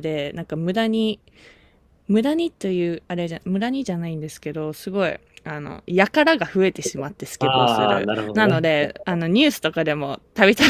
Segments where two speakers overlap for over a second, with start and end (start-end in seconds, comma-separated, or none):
7.4-9.3